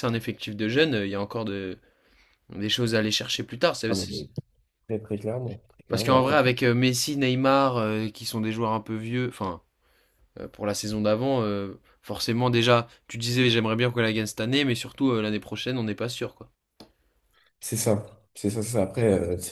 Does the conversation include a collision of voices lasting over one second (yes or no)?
no